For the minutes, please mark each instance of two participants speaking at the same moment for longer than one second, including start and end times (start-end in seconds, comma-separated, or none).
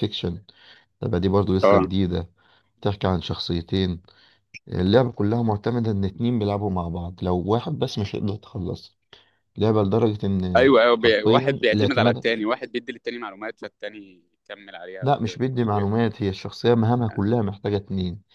10.6-12.2